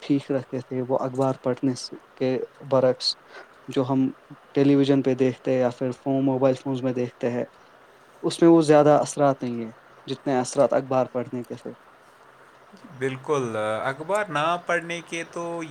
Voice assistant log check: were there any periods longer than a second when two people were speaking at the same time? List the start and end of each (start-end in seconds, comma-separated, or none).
none